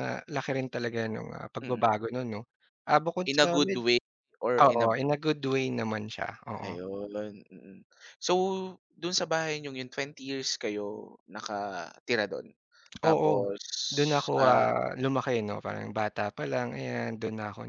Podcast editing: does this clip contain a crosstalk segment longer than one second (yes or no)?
no